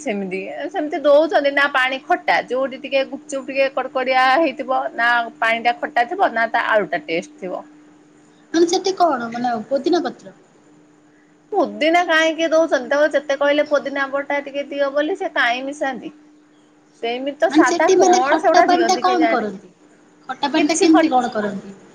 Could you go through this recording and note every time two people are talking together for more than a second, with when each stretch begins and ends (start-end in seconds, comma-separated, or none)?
17.5-19.4